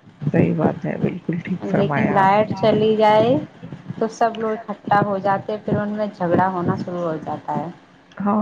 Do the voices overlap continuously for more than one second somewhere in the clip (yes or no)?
yes